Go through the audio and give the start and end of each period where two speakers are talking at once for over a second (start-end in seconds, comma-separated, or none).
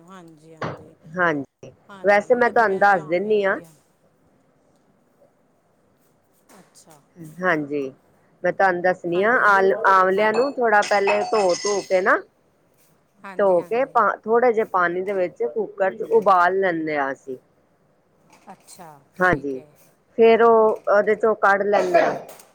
1.9-3.6